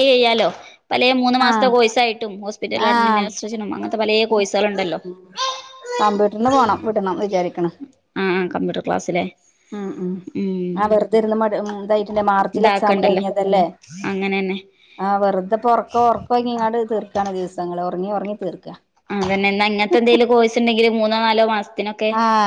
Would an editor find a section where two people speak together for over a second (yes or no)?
no